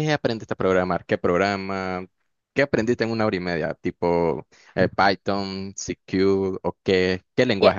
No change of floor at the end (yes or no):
no